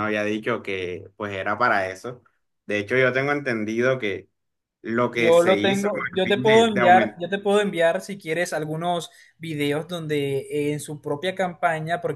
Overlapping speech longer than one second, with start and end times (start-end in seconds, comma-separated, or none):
5.1-7.2